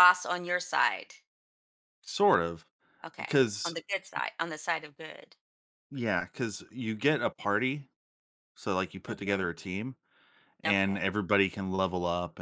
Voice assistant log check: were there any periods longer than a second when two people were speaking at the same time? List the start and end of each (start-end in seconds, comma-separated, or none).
none